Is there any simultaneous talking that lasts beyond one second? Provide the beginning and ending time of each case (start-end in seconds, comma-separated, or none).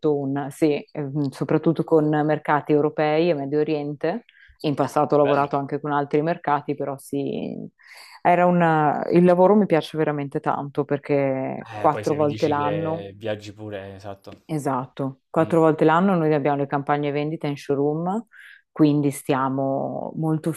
11.8-13.1